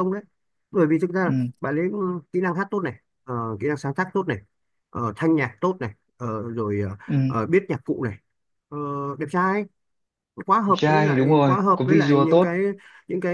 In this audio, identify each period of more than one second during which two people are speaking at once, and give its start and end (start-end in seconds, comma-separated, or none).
10.7-12.6